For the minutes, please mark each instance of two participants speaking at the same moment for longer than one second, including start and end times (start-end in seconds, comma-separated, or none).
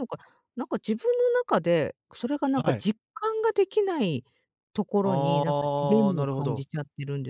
5.0-6.6